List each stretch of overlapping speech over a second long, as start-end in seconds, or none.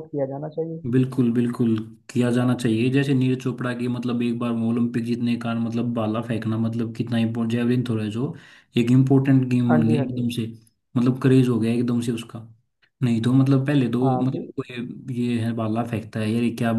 none